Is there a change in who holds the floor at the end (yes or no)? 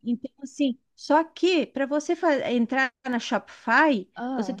no